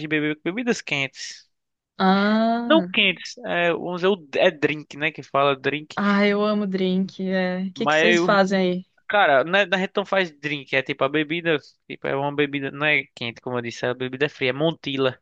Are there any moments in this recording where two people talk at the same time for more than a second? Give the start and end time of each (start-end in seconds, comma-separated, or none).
none